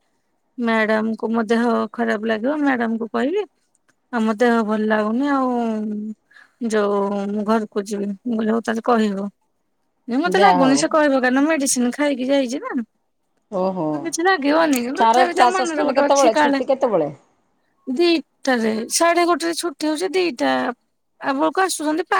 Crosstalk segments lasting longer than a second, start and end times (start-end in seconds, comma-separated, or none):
15.0-16.6